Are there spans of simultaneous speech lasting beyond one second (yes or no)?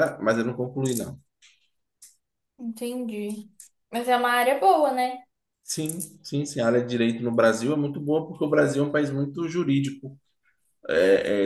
no